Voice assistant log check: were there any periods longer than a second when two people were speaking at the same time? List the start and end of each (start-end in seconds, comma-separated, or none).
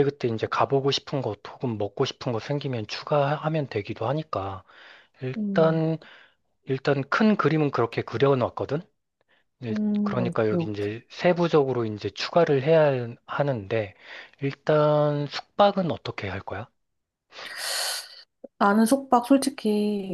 9.7-11.0